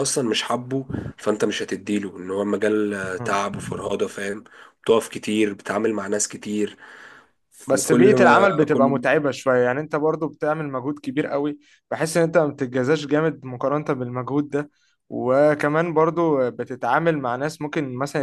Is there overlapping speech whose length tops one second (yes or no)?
yes